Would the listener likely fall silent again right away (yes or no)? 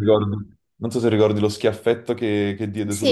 no